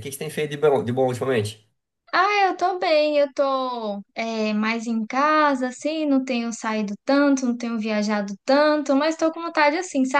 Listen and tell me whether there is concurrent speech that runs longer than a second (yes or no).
no